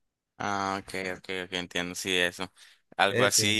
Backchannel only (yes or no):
yes